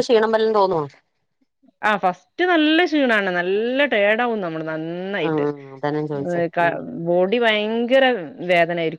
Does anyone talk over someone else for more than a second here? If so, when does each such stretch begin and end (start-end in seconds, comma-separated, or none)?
none